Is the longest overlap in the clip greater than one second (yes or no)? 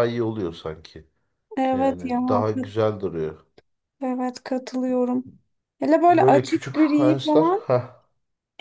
yes